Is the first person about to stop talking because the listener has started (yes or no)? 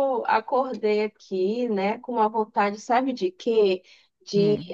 no